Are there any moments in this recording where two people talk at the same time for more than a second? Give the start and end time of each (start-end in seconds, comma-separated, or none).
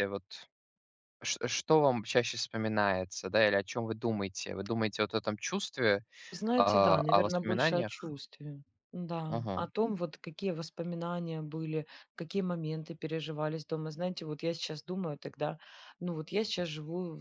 6.6-8.1